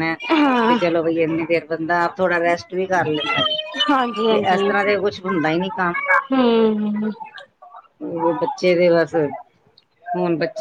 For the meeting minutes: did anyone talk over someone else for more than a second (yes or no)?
no